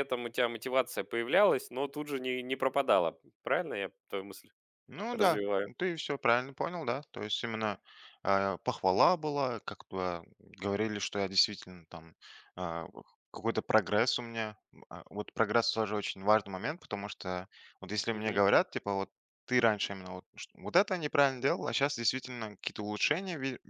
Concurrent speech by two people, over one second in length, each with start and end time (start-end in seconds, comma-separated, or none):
none